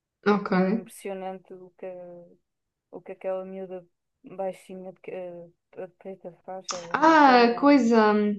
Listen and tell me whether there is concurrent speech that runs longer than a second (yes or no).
no